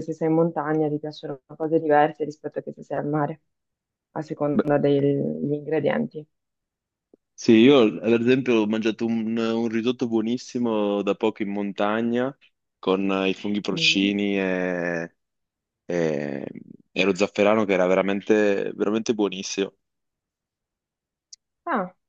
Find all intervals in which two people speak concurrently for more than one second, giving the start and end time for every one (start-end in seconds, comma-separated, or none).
none